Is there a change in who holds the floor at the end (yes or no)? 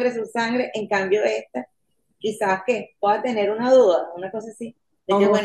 no